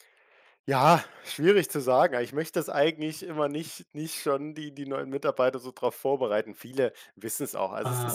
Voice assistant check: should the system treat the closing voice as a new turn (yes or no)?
no